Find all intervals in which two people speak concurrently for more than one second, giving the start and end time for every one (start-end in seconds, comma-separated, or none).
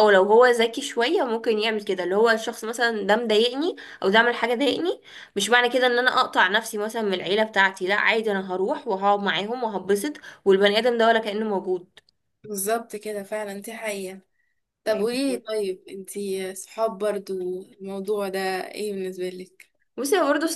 none